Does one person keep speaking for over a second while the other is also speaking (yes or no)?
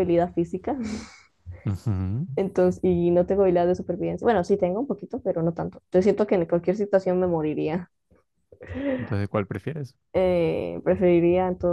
no